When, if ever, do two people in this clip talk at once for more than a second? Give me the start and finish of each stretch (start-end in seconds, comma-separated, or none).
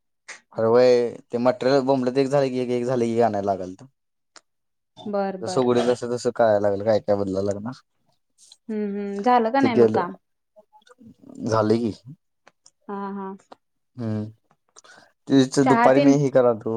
none